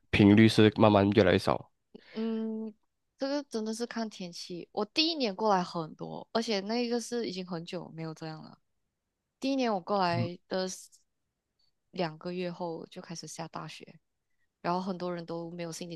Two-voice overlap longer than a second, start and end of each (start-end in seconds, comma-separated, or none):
none